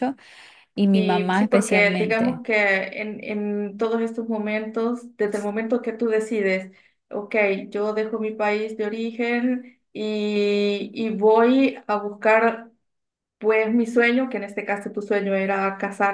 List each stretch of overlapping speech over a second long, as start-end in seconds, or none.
0.9-2.4